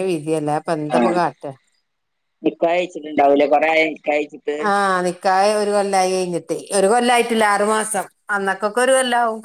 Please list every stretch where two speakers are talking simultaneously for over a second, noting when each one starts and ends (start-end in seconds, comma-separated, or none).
none